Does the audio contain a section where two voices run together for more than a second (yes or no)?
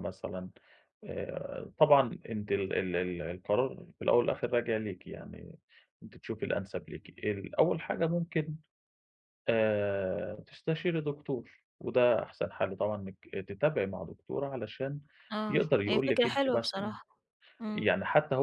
yes